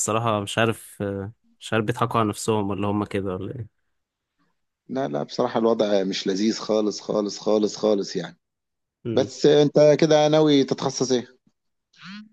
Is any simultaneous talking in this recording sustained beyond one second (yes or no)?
no